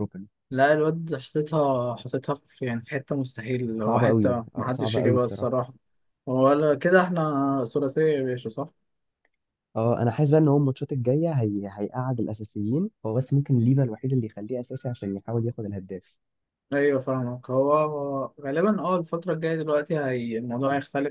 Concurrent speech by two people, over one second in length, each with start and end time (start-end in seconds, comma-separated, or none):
3.8-5.5